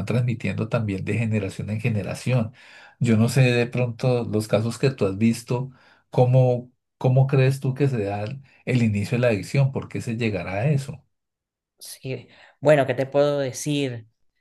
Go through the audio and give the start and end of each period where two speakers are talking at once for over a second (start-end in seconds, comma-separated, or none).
none